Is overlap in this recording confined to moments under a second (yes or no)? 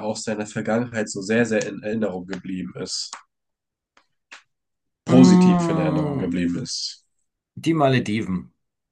no